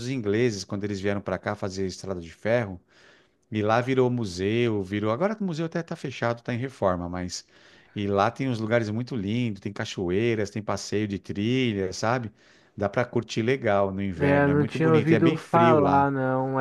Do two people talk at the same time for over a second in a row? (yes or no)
yes